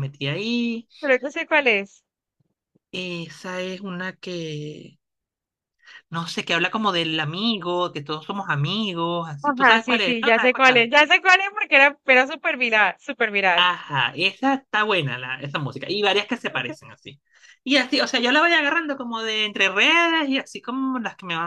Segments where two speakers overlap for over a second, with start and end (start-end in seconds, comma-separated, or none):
9.4-10.9